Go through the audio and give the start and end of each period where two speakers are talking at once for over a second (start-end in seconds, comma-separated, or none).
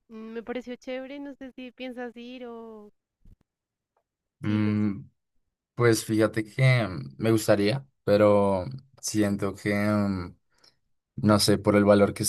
none